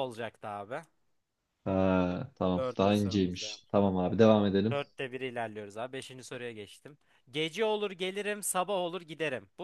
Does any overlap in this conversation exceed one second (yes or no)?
yes